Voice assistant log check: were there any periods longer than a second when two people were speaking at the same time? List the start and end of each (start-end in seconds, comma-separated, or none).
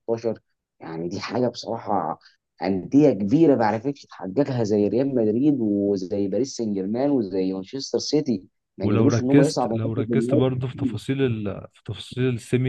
8.8-10.4